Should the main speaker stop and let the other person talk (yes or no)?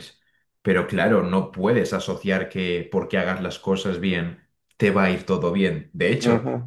no